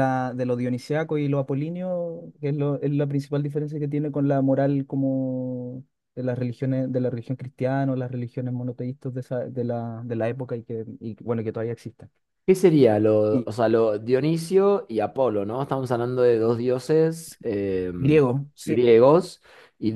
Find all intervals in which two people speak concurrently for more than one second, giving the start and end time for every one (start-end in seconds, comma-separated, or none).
none